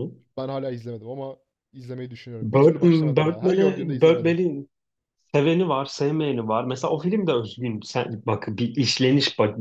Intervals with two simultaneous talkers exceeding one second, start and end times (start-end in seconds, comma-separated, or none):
2.4-4.4